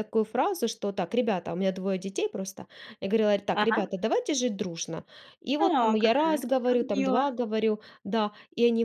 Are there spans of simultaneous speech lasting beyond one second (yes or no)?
yes